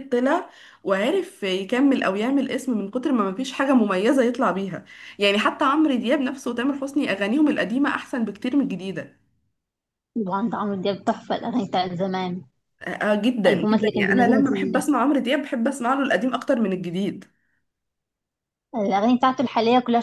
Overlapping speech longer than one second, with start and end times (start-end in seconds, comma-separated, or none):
13.4-14.8